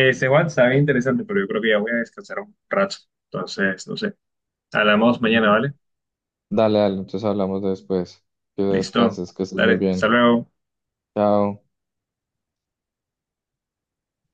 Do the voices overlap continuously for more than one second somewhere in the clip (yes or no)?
yes